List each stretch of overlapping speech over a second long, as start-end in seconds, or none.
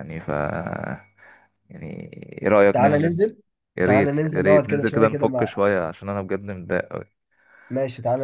3.8-5.6